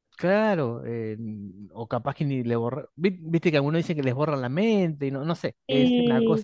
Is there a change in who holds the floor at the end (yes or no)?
no